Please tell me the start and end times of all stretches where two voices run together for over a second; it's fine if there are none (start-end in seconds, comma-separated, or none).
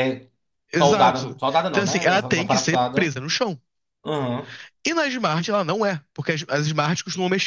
0.8-3.1